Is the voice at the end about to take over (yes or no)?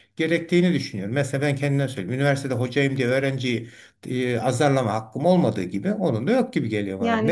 yes